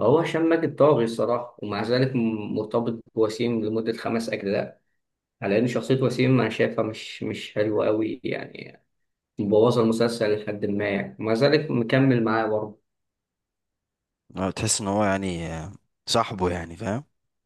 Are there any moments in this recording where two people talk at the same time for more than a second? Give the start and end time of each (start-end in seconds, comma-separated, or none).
none